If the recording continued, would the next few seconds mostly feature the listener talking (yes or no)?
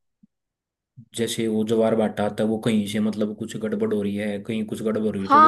yes